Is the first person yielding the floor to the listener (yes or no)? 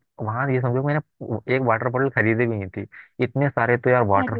no